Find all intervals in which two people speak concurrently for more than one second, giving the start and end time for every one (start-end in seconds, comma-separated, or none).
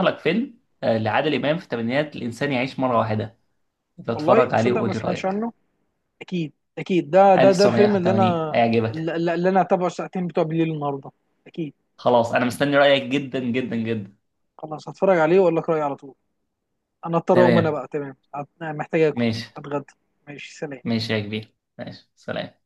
4.2-5.4, 7.4-9.2